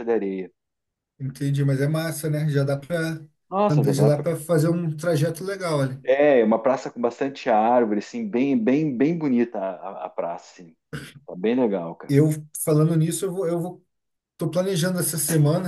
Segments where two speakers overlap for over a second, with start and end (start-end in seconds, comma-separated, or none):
none